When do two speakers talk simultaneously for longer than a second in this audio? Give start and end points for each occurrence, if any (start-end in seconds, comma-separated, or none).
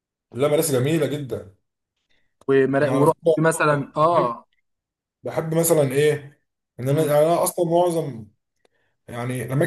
none